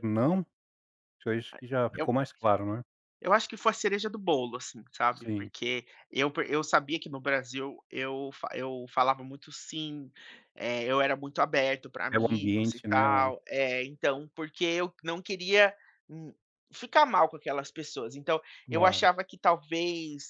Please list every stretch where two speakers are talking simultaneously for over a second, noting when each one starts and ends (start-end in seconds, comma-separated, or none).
12.1-13.3